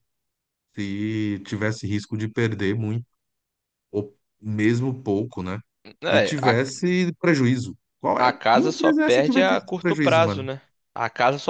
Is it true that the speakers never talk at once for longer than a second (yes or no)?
no